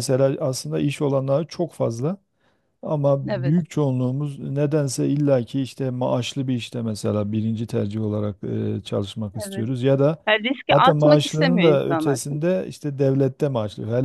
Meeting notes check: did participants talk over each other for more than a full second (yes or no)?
yes